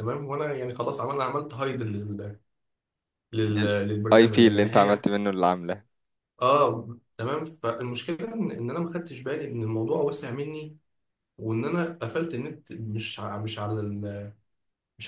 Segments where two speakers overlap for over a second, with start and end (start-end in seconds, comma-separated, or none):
3.5-5.0